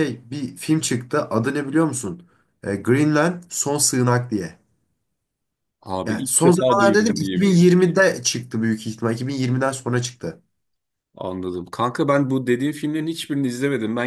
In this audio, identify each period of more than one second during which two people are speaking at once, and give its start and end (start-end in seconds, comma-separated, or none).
6.1-7.5